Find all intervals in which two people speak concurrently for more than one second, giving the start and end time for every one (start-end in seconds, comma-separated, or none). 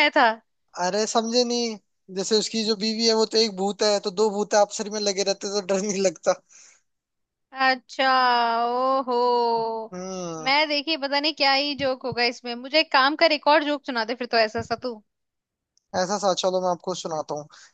none